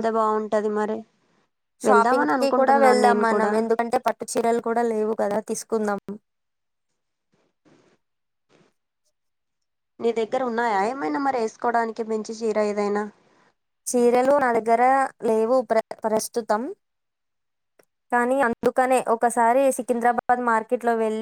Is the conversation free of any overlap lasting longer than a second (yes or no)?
no